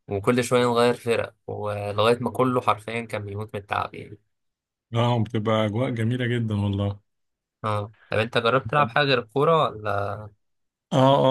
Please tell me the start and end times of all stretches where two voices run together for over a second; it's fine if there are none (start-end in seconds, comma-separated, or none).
none